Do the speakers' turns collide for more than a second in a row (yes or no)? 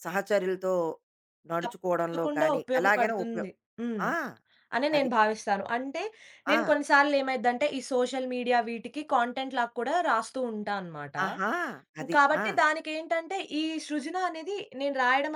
yes